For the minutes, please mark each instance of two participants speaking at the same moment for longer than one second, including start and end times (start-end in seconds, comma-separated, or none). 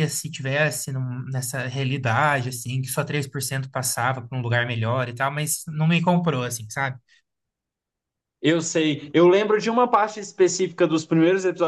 none